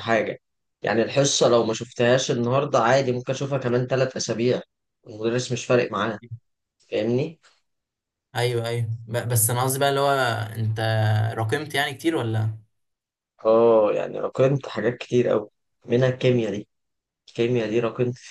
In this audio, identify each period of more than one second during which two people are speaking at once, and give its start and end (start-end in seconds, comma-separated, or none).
none